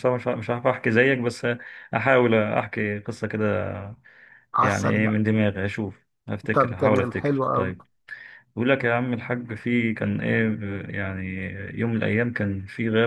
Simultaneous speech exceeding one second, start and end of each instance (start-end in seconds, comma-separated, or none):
6.5-7.7